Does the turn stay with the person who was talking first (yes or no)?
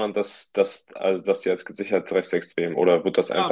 no